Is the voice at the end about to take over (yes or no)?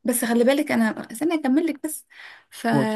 no